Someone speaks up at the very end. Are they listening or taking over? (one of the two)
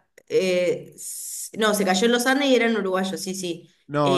taking over